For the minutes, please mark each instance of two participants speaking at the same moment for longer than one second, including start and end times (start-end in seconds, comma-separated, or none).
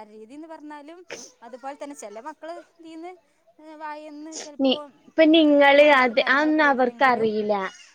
5.8-7.3